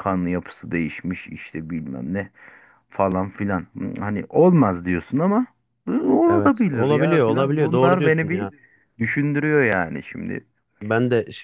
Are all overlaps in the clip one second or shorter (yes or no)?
no